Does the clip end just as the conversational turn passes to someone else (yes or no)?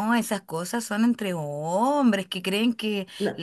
no